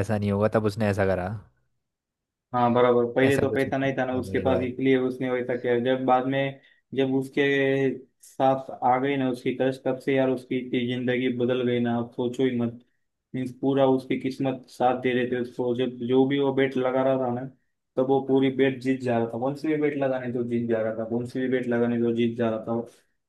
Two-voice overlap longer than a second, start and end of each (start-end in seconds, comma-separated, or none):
3.2-4.7